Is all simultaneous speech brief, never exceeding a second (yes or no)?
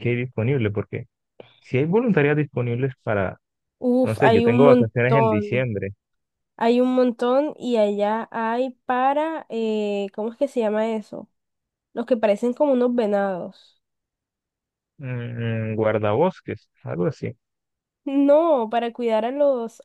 no